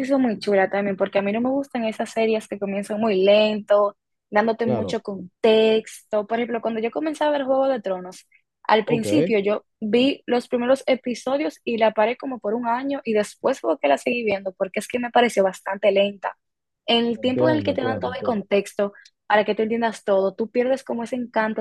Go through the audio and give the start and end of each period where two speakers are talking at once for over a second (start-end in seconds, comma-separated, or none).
17.1-18.4